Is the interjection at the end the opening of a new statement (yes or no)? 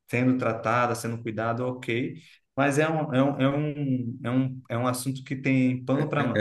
yes